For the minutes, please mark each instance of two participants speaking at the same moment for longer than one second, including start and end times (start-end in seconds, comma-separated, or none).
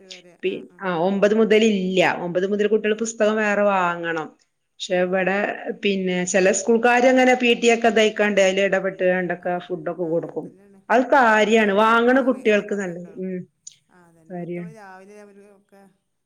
11.2-13.1